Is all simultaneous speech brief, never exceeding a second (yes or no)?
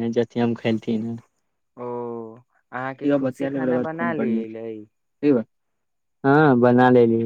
no